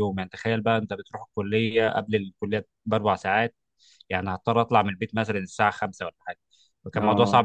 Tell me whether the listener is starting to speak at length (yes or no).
no